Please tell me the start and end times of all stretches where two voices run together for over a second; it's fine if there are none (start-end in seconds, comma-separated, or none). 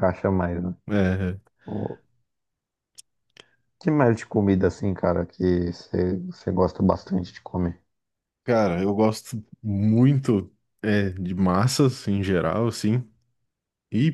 none